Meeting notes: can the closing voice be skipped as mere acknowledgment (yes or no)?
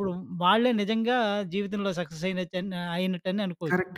no